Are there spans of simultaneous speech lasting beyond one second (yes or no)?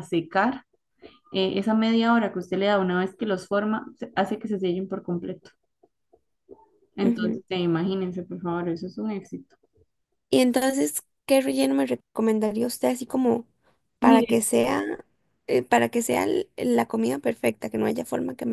no